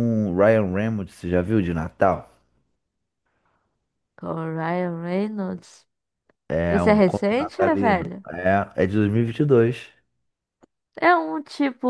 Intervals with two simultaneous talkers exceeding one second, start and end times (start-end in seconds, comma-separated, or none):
6.7-8.2